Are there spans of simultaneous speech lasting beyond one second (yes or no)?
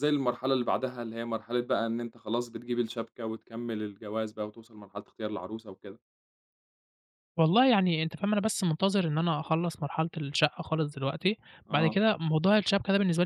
no